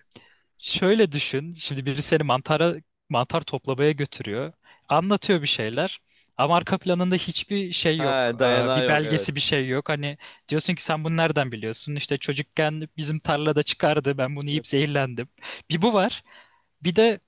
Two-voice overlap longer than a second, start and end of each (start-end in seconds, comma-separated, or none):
8.0-9.3